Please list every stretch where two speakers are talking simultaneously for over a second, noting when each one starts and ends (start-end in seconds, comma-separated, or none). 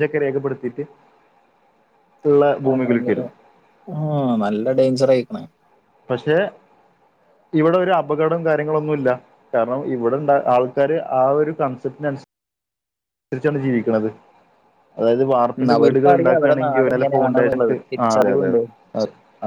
15.6-18.5